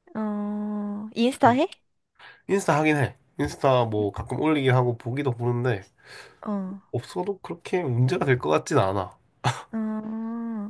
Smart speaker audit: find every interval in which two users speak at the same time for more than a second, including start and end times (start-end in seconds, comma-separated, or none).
none